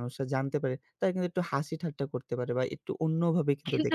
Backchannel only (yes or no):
no